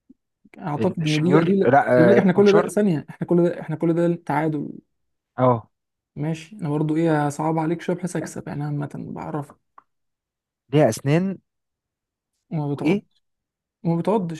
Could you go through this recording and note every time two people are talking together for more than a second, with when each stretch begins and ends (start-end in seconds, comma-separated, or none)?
1.0-2.7